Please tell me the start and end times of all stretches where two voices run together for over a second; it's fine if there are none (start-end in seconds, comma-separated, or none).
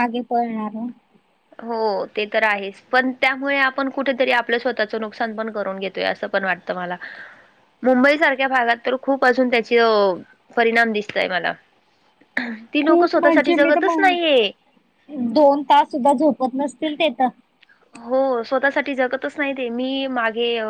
12.8-14.1